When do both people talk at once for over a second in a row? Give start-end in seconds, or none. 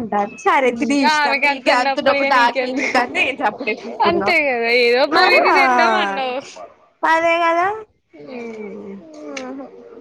0.8-3.0